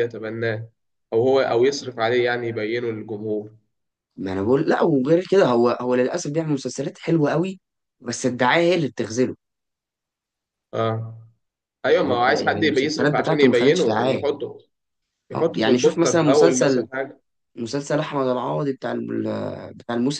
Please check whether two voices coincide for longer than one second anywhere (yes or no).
yes